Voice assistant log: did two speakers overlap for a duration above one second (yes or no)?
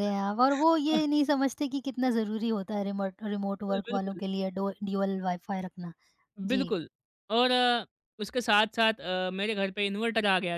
no